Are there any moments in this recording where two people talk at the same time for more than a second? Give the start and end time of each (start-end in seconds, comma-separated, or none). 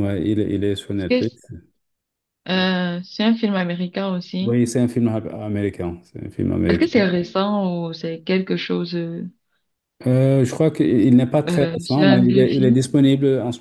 11.5-12.8